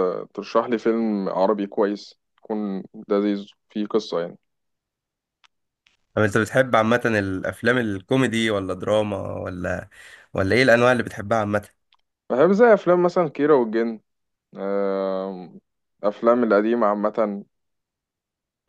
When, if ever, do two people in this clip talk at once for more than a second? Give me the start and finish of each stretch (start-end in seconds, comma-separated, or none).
none